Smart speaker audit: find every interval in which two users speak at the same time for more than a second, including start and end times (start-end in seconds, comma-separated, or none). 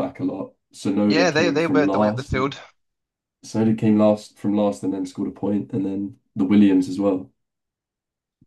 1.1-2.6